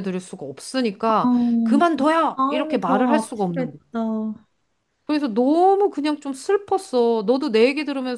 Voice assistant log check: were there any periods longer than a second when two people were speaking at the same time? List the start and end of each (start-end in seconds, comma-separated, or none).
2.3-3.8